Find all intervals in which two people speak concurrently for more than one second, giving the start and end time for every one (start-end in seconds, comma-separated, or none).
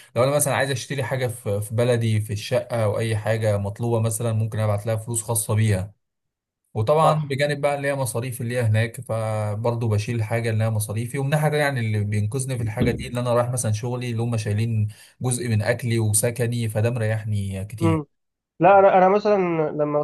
none